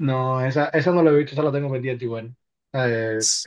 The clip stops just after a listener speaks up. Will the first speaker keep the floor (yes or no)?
yes